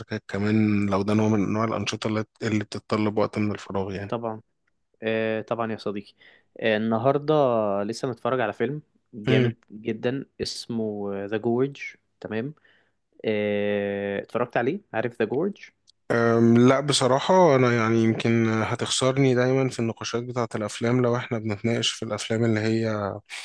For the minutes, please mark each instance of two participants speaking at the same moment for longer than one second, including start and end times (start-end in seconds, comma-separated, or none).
none